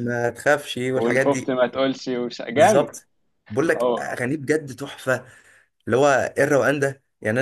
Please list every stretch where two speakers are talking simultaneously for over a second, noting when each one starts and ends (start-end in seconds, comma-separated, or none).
none